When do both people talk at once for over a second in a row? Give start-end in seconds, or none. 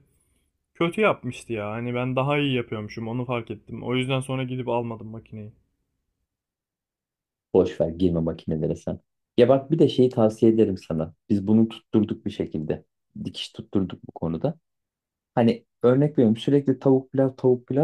none